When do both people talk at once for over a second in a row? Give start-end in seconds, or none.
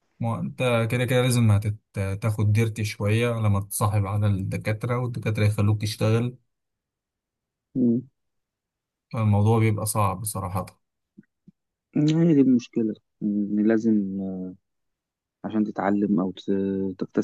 none